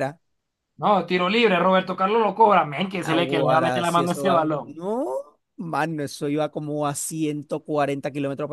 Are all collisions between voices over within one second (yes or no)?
no